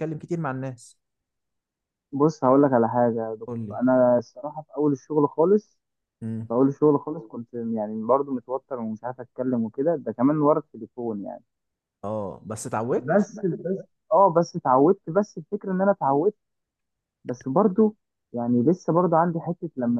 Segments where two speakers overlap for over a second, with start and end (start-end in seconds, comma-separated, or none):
none